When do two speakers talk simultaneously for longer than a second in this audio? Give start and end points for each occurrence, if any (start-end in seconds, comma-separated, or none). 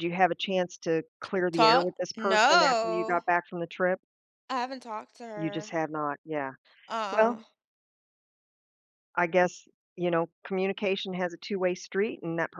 1.5-3.2